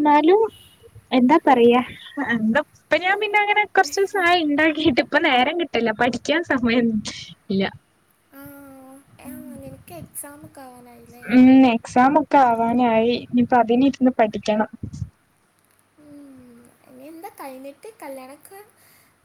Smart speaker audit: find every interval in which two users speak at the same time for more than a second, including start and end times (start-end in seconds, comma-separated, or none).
none